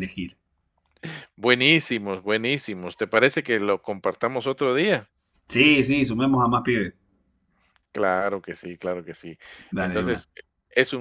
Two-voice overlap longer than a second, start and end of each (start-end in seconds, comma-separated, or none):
none